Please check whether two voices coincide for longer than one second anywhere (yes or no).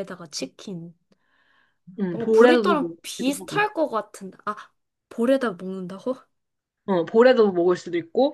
yes